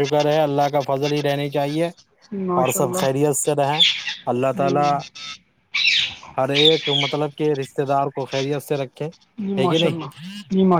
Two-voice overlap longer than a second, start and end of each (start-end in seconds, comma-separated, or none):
none